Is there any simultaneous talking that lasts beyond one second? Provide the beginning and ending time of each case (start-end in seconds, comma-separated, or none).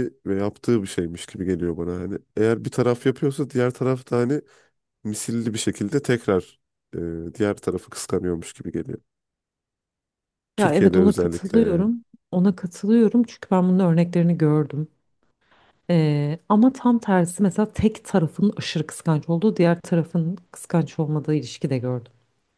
10.6-11.9